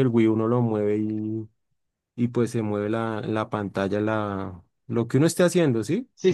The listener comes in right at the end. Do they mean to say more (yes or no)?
yes